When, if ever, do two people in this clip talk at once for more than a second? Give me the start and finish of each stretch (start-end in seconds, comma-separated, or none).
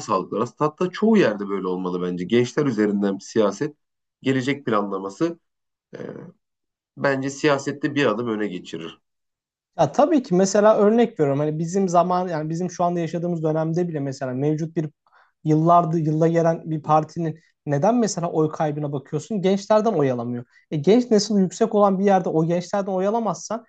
none